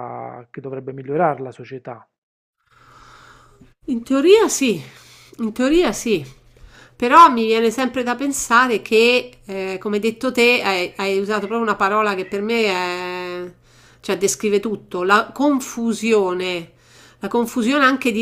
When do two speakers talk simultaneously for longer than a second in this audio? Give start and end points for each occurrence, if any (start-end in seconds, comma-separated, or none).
none